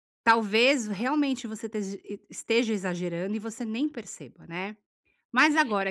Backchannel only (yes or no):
yes